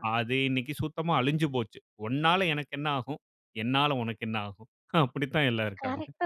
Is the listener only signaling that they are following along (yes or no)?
no